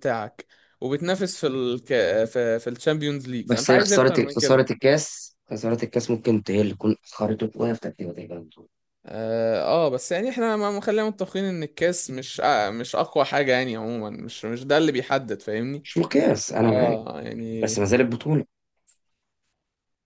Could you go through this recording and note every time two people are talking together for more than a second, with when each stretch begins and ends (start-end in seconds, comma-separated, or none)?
3.4-4.6